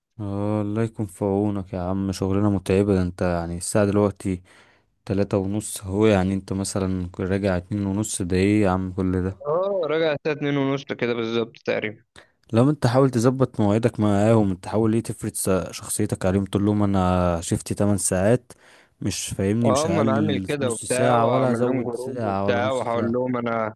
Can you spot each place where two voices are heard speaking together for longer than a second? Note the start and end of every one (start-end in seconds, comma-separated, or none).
19.7-23.2